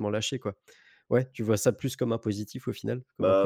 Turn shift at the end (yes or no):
yes